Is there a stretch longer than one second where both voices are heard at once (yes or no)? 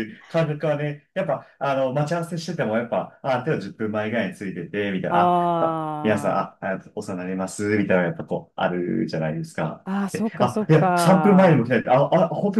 yes